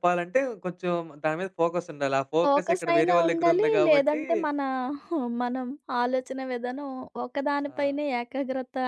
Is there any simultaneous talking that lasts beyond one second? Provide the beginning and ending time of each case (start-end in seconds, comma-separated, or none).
2.4-4.2